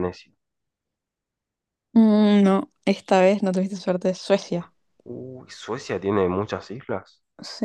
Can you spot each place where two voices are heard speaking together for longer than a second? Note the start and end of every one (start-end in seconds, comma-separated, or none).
none